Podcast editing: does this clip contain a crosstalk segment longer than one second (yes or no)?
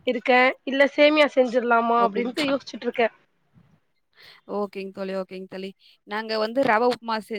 no